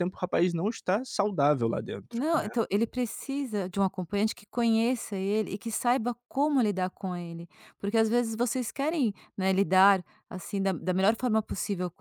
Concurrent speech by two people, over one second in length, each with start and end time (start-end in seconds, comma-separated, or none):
none